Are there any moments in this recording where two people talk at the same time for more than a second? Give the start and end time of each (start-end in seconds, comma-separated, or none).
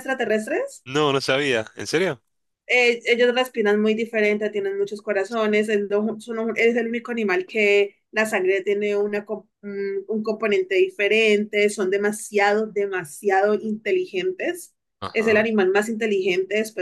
none